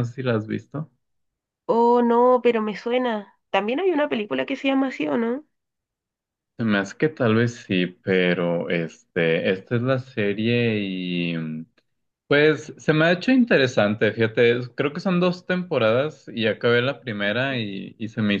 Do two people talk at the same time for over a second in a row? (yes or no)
no